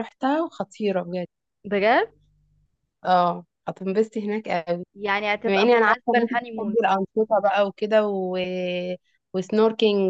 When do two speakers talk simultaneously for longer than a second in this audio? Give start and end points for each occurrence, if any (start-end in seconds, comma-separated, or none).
5.5-6.8